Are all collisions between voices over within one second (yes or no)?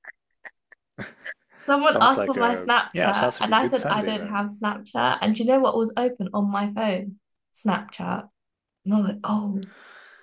no